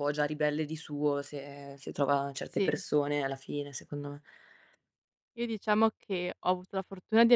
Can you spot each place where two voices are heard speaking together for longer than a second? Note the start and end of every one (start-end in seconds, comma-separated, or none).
none